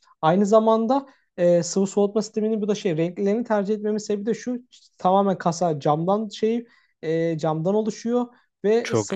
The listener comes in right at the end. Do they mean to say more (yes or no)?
no